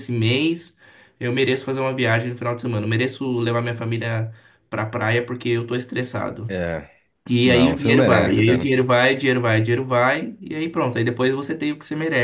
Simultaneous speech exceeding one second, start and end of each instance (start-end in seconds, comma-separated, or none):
7.5-8.7